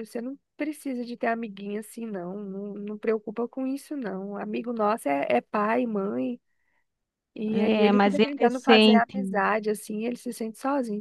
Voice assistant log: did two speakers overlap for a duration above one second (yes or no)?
yes